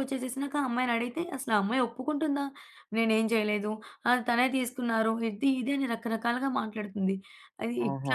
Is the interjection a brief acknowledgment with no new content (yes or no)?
yes